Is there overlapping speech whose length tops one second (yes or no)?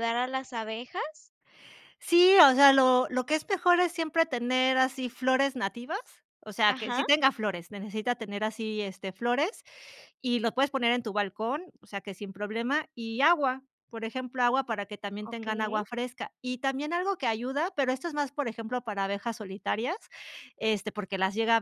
no